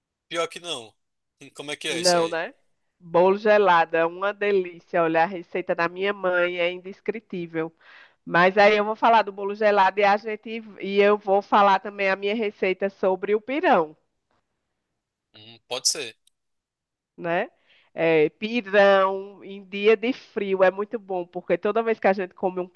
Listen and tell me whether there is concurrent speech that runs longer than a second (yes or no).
no